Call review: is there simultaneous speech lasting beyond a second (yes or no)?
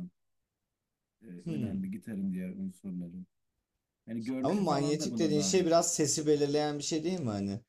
yes